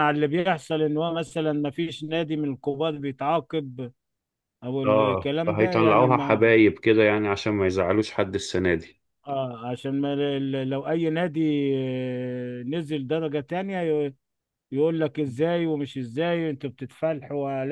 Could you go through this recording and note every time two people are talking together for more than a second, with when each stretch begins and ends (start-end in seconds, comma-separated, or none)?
4.8-6.5